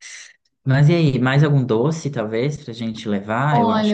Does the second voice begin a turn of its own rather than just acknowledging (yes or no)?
yes